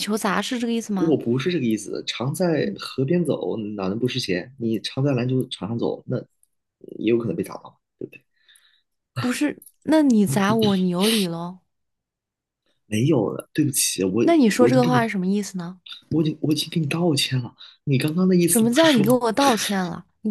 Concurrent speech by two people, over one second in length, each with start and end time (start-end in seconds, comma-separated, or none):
none